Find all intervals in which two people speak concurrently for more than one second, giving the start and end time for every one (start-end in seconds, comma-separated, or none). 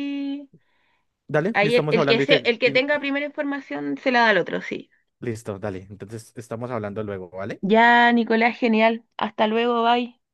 1.5-2.8